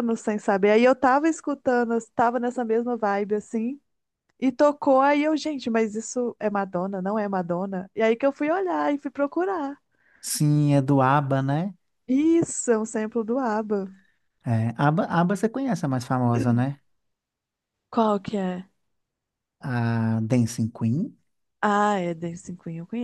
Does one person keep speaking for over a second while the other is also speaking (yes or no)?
no